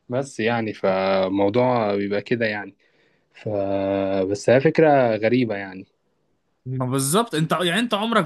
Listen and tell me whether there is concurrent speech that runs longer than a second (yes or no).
no